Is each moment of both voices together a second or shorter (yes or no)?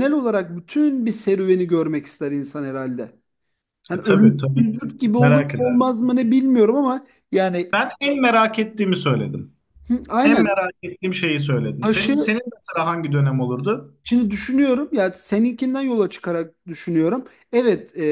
no